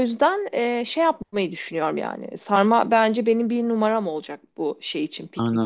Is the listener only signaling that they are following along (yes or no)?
no